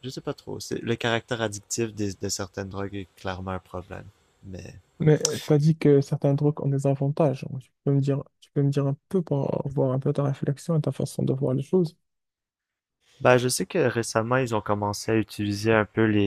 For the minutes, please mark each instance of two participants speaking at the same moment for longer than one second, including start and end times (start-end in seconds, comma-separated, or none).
none